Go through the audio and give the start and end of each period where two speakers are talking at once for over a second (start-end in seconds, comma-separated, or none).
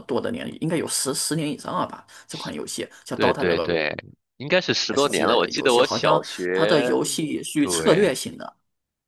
4.9-6.9